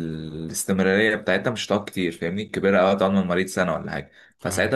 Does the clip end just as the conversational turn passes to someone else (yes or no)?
no